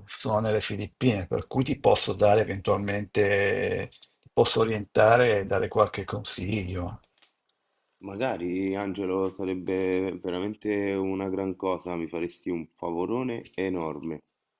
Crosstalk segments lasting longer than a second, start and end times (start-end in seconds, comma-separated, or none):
none